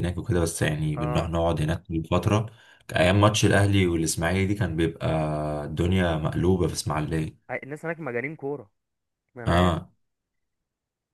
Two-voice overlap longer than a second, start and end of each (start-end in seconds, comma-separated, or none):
none